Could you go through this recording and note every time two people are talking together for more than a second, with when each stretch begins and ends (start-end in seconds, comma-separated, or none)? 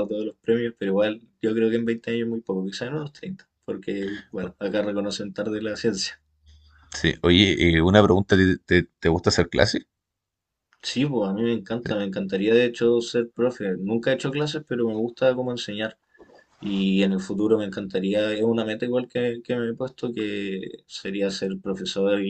none